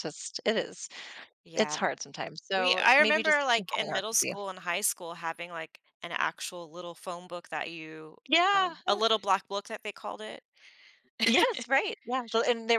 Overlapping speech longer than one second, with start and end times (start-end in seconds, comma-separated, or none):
2.5-4.3